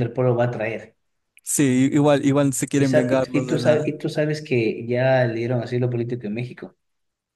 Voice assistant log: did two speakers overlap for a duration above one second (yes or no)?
yes